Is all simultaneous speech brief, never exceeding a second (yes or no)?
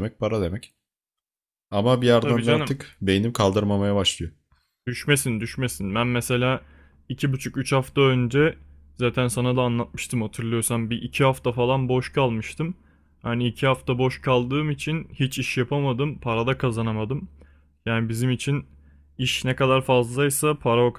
yes